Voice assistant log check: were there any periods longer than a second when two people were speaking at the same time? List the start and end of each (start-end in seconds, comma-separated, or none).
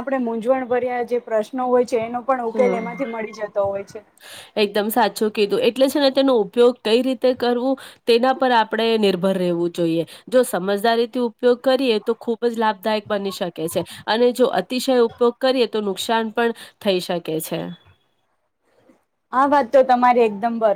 none